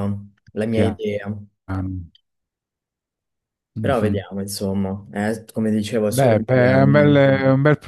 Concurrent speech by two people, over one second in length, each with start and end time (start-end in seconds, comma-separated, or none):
6.1-7.3